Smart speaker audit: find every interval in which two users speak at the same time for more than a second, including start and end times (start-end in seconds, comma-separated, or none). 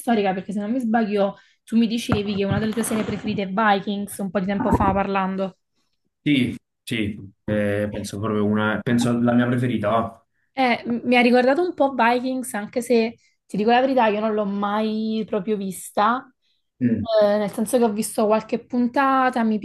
none